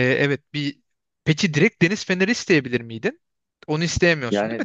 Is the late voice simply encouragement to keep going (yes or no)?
no